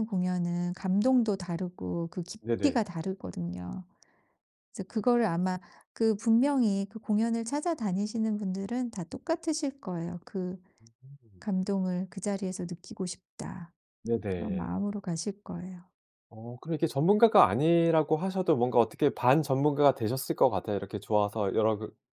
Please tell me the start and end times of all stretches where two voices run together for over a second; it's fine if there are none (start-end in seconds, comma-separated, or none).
none